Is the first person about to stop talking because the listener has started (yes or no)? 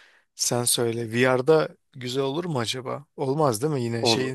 yes